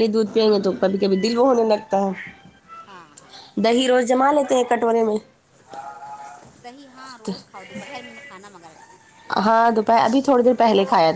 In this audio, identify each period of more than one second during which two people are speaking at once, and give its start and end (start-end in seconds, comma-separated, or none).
none